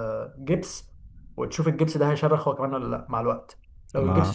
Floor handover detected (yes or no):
no